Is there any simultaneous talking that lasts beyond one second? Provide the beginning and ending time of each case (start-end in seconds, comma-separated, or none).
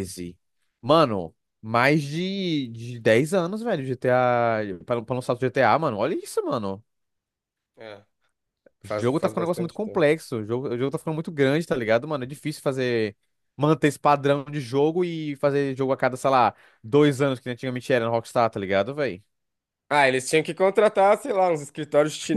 8.8-10.0